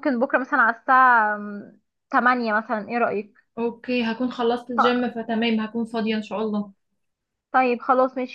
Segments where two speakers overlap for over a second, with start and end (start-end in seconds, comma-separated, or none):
none